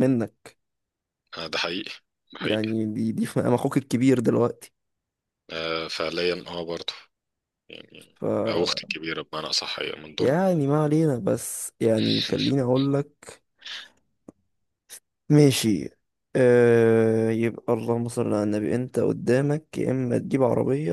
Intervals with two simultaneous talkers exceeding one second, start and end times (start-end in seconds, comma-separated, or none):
none